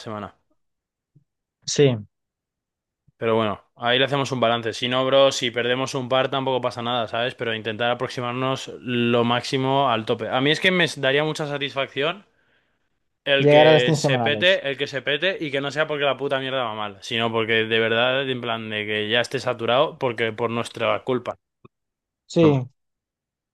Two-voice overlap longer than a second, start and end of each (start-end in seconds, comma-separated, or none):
13.4-14.6